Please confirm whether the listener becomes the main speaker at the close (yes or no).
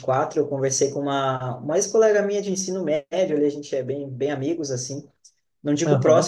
no